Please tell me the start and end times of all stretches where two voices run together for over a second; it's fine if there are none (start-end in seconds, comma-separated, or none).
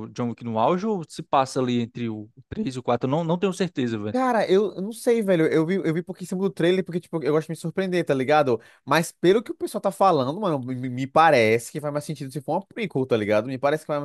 none